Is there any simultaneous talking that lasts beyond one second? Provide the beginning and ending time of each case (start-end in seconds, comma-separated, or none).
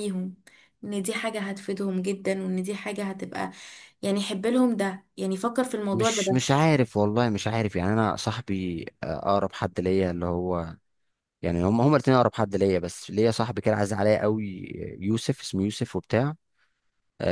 none